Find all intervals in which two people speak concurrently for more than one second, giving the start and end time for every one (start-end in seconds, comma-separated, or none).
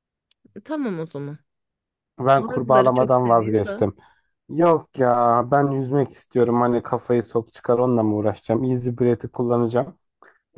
2.4-3.8